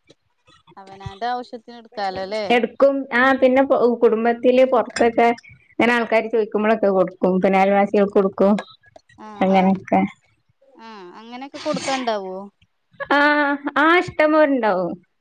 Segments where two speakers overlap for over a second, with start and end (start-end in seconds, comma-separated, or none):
none